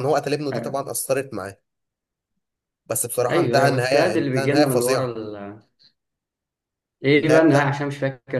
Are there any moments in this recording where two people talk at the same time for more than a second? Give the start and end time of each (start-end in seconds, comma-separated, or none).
3.3-5.1